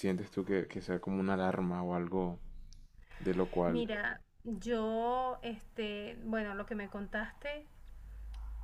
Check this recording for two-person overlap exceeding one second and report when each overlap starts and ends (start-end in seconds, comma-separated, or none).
none